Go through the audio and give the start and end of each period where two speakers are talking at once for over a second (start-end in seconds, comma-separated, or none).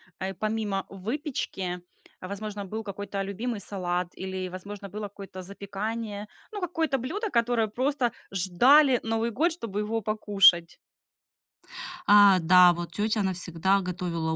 none